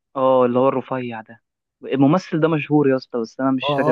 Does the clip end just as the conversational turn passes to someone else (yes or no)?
yes